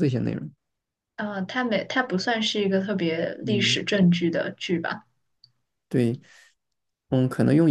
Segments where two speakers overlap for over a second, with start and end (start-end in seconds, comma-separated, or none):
none